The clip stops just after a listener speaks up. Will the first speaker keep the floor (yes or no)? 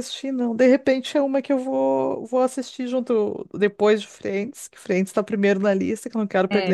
no